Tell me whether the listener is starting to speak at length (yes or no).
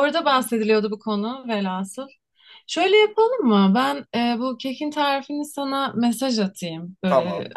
no